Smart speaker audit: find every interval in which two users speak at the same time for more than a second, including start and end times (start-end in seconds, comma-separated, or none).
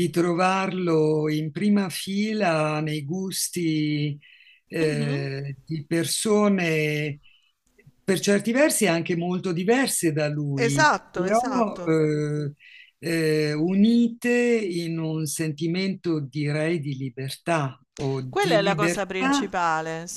10.5-11.9, 18.3-19.6